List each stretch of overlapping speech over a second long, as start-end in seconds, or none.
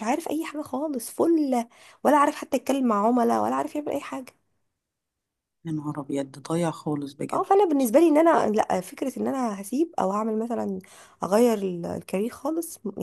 none